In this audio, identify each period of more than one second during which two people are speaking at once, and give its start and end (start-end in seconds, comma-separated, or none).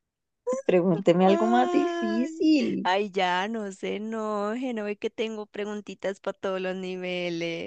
1.2-2.9